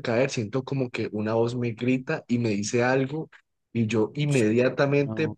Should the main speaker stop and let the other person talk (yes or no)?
no